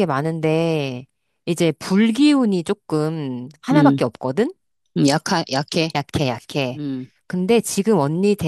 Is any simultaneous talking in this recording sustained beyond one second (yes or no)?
no